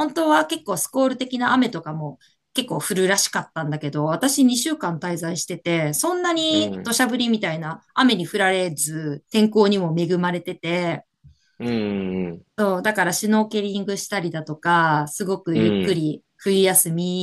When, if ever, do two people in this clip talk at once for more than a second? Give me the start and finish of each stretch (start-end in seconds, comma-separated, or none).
none